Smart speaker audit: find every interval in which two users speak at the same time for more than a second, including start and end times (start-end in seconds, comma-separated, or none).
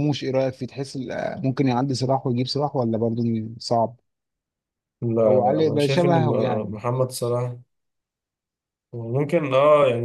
5.3-6.7